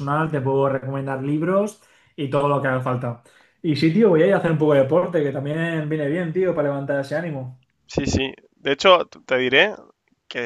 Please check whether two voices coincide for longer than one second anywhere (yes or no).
no